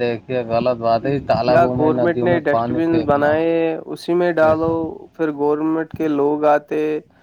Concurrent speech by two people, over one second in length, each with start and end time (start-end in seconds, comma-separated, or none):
1.5-3.3